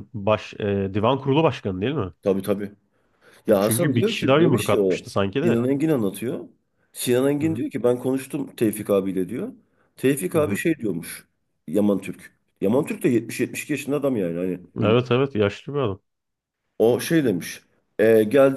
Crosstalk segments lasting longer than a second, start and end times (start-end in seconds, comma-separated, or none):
3.5-5.6